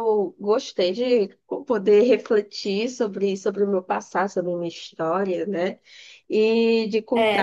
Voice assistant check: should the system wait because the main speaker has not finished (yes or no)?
no